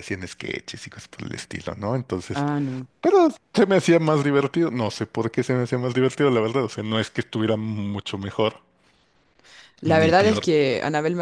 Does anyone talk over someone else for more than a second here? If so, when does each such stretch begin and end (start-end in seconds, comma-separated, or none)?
none